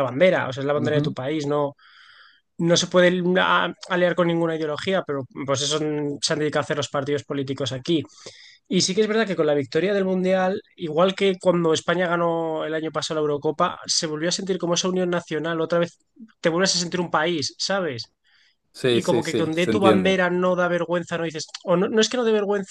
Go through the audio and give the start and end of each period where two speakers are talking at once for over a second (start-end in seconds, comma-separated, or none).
18.9-20.2